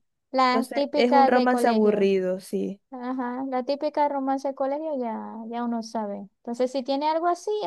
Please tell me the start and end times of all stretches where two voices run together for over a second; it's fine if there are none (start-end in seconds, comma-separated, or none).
0.5-2.1